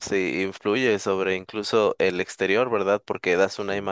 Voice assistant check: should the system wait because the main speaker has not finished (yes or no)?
yes